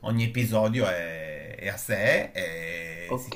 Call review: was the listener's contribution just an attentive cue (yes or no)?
yes